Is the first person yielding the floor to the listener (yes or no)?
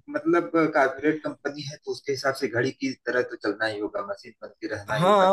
yes